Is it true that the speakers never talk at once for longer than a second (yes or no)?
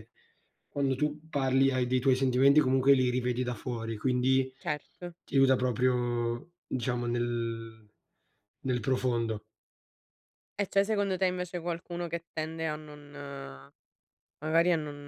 yes